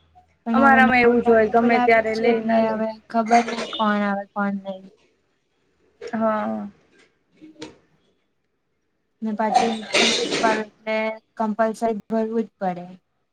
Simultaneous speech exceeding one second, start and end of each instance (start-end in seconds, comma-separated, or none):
0.6-2.8